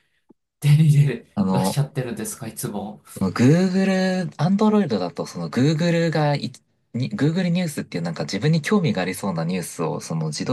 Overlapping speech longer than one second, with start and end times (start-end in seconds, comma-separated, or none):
none